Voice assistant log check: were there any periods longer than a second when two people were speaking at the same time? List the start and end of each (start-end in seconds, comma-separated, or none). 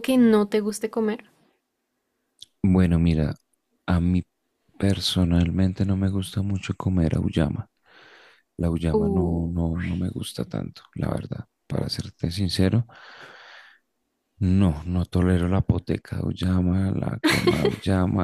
none